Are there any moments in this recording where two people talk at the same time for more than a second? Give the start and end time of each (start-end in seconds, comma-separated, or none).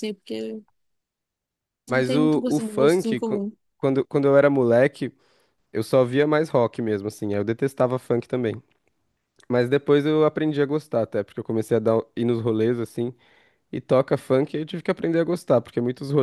1.9-3.4